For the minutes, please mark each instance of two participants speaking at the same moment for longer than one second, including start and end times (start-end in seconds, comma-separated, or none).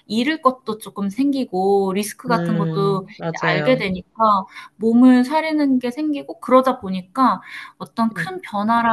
2.3-3.8